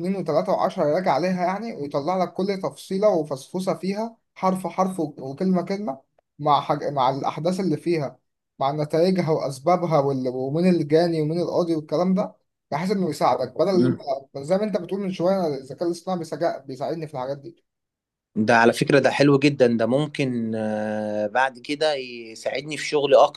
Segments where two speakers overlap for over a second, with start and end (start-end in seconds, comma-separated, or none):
none